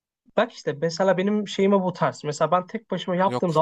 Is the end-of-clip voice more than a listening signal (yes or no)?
no